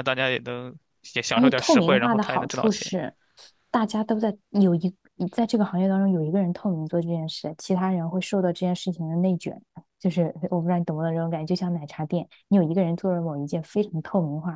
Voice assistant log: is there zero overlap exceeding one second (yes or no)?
no